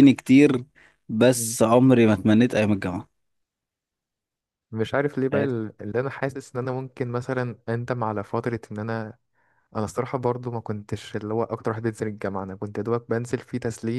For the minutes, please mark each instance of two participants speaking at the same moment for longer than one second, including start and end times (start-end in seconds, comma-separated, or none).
none